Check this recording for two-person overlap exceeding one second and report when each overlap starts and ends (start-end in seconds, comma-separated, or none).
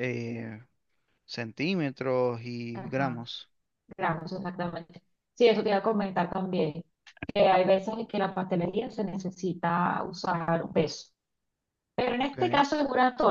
none